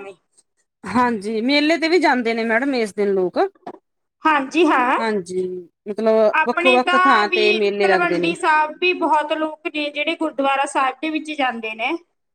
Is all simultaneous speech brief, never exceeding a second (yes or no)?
no